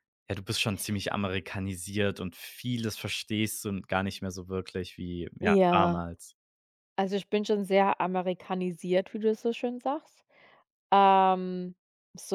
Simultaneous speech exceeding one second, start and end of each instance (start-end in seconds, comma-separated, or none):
none